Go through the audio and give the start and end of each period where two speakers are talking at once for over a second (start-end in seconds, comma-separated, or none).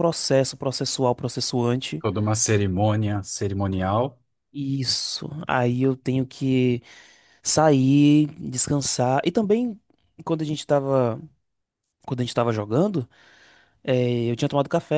none